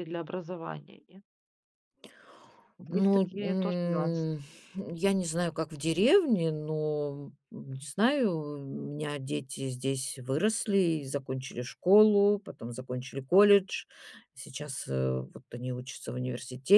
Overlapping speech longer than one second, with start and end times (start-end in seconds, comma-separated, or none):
2.9-4.3